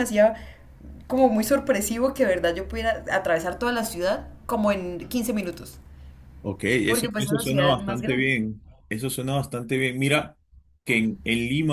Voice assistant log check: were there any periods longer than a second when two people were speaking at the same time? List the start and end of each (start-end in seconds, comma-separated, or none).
6.8-8.3